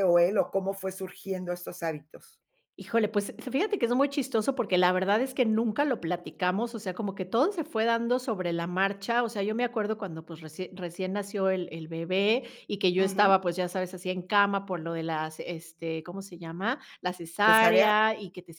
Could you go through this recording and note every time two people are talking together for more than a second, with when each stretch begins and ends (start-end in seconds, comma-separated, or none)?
none